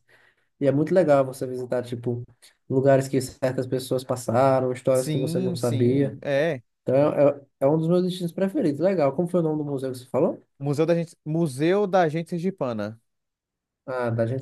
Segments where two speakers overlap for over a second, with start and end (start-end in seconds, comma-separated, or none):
4.9-6.2